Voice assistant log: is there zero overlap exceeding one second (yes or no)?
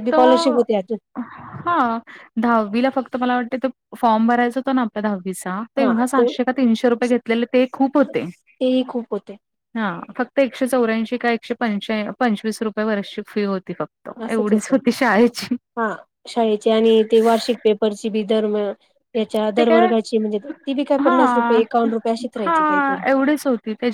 yes